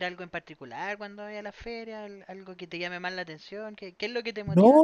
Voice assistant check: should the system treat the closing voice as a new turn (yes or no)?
yes